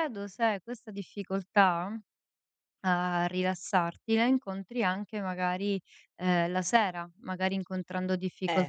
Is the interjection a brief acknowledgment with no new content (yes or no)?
yes